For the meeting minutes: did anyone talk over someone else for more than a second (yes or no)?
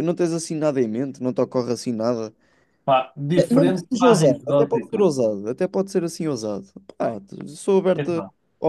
yes